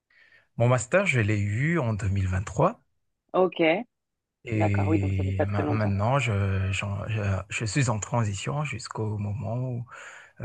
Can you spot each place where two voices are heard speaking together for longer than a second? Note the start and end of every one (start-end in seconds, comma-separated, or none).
4.5-6.0